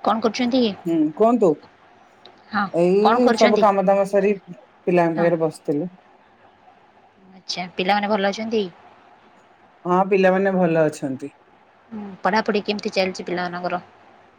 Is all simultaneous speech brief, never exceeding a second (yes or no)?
yes